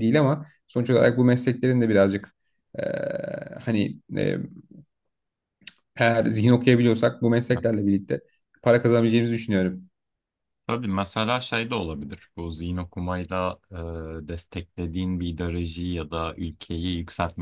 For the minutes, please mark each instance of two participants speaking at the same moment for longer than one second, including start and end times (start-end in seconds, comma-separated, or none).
none